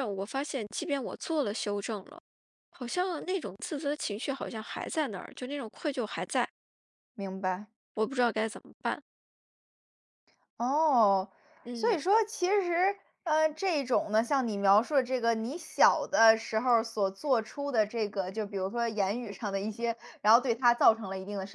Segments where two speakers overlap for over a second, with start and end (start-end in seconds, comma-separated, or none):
none